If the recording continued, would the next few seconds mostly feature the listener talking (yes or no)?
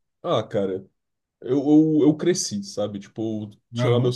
no